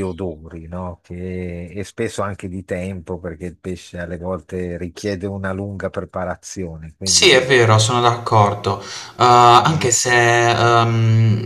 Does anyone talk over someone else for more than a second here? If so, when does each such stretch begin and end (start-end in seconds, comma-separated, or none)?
none